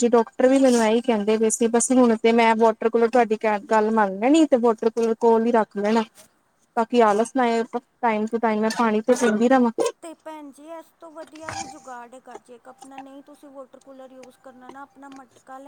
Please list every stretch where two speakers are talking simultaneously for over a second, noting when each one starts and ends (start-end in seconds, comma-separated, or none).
none